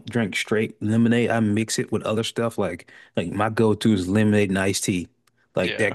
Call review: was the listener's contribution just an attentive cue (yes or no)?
yes